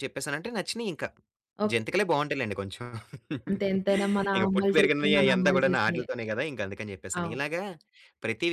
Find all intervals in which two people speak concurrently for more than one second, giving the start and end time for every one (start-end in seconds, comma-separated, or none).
4.4-6.0